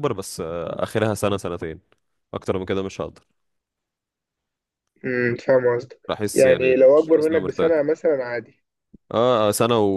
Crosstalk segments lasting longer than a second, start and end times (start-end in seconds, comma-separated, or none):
6.1-7.7